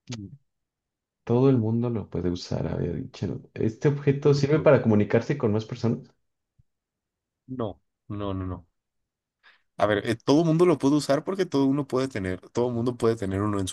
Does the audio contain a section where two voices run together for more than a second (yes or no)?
no